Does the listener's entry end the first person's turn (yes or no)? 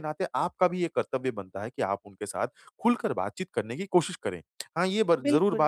no